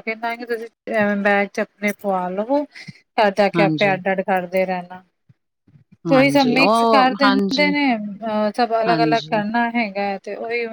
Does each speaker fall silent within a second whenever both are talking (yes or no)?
no